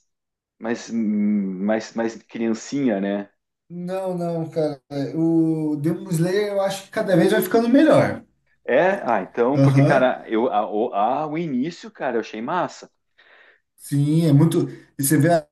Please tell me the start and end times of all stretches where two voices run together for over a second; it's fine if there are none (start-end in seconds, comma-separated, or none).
none